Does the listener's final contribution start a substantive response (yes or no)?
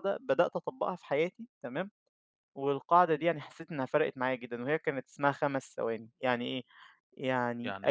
no